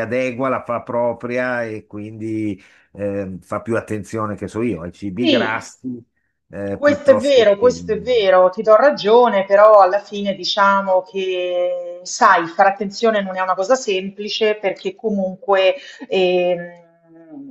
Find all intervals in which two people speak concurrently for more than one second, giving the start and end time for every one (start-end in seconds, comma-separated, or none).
6.7-8.0